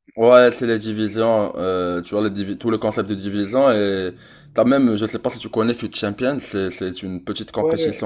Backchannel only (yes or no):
no